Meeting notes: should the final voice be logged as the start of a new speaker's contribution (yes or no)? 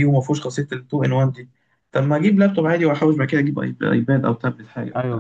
yes